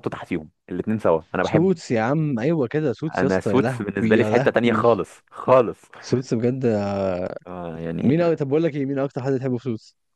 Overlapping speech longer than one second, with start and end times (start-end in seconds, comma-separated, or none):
3.2-4.8